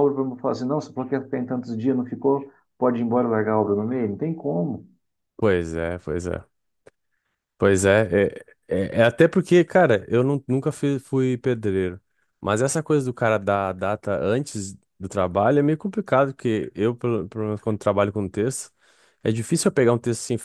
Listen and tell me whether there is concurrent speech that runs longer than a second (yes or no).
no